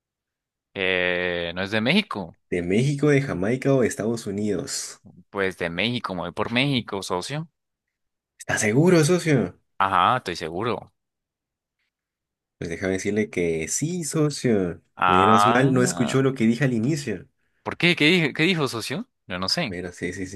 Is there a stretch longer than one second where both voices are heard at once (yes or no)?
yes